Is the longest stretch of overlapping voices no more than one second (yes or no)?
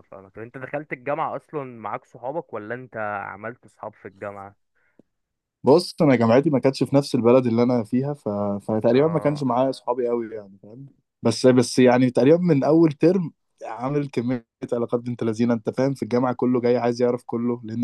yes